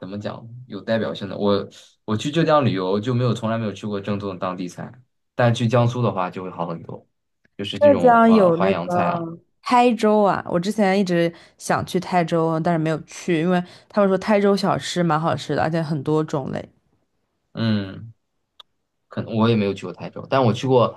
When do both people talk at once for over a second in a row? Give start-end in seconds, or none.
7.7-9.3